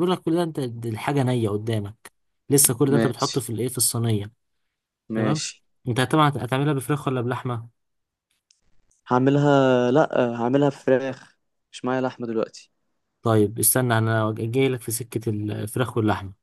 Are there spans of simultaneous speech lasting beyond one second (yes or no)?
no